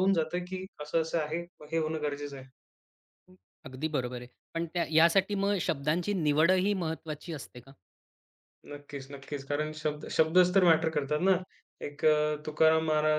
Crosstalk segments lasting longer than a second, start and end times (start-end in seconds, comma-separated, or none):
none